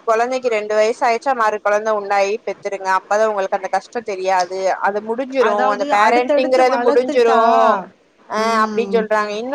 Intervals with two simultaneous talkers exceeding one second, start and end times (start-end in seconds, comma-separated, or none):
5.5-7.4